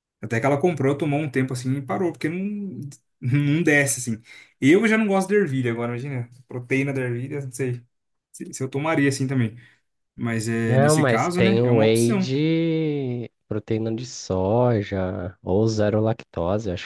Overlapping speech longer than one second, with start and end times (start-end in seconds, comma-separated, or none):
10.7-12.3